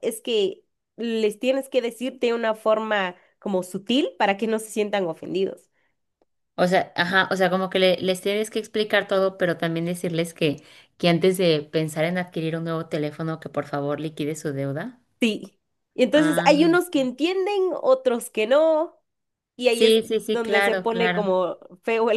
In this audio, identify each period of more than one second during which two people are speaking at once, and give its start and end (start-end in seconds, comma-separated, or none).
19.7-21.3